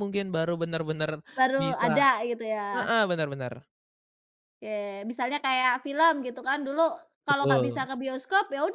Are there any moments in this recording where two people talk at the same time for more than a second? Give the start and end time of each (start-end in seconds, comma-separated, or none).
none